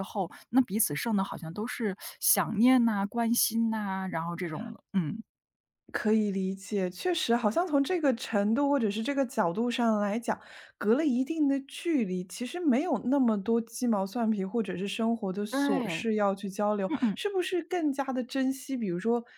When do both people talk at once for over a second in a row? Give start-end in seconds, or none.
none